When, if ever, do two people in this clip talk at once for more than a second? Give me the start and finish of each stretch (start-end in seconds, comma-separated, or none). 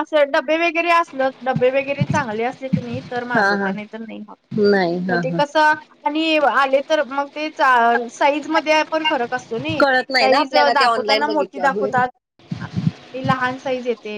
10.2-11.9